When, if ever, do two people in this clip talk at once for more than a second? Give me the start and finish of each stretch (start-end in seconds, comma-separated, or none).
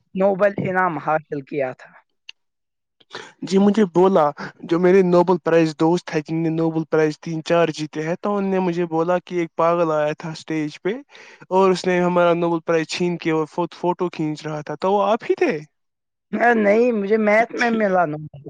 none